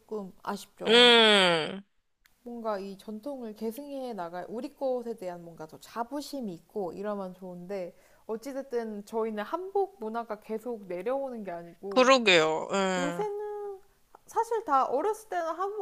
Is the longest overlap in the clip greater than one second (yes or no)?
no